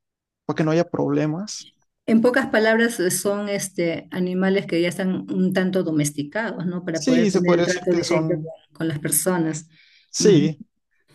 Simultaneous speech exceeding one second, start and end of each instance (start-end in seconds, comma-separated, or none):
6.9-8.5